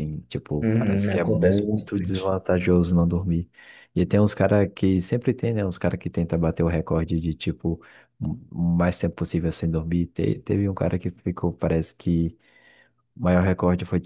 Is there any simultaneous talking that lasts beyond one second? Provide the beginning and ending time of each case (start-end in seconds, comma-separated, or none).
0.6-2.3